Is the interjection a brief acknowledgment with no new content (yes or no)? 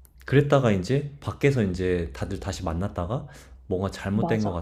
yes